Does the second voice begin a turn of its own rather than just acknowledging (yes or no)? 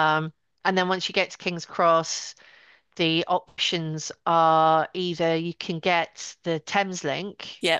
no